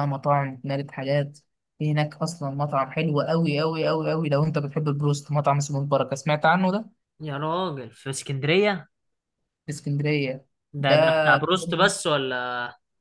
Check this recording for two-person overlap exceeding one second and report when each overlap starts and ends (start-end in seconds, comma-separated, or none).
none